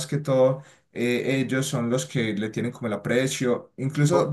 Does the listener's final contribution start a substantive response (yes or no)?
no